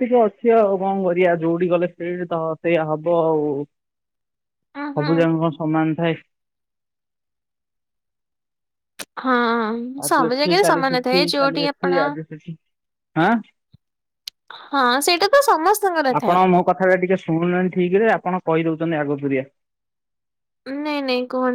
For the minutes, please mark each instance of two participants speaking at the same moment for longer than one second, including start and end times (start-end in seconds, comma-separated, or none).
10.1-11.9